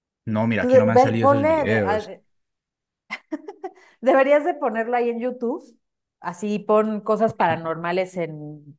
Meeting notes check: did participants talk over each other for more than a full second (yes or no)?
yes